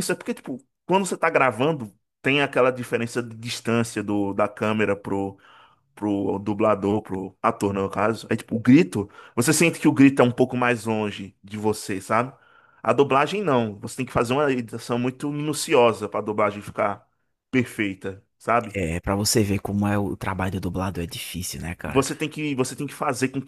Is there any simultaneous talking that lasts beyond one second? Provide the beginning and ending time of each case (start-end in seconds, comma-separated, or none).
none